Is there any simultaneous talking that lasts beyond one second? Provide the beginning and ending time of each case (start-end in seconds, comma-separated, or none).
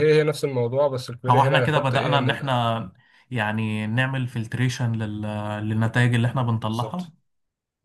1.3-2.6